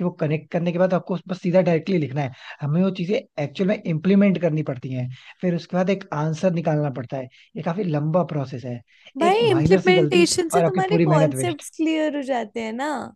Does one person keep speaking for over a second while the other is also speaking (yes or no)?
yes